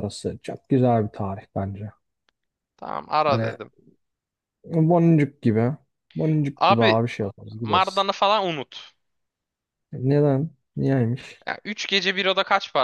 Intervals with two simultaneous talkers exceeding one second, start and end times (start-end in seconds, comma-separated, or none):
none